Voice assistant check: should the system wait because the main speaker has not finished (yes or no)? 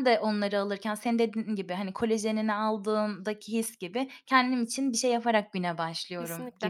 no